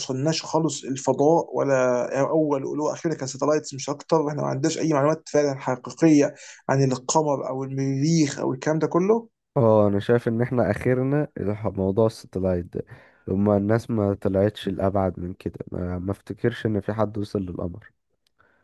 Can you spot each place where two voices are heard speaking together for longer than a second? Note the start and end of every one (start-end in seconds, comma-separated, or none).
none